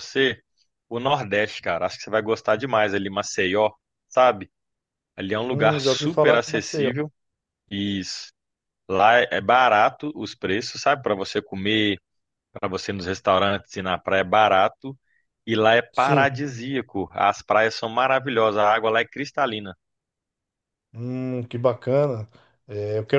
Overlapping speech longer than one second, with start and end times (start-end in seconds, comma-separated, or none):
5.5-6.9